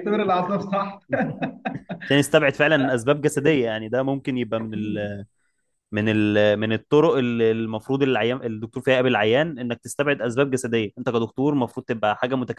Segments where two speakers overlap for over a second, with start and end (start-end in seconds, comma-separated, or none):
none